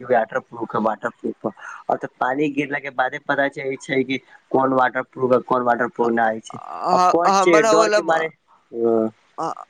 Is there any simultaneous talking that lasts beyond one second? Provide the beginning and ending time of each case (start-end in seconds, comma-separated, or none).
6.0-8.0